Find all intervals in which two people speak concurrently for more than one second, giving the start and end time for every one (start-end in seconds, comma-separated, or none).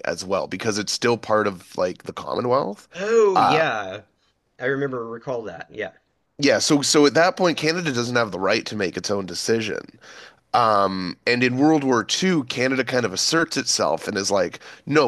none